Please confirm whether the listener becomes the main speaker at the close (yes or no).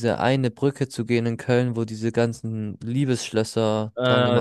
yes